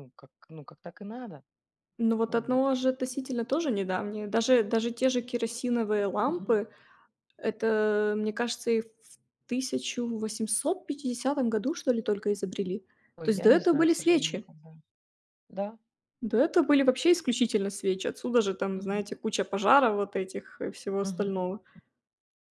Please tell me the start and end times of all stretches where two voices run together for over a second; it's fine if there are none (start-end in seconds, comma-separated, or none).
13.2-14.5